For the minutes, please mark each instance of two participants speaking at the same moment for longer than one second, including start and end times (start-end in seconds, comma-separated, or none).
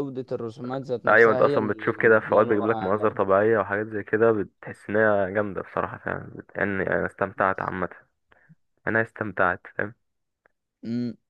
1.1-3.2